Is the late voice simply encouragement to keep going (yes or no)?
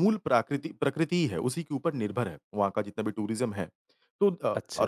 yes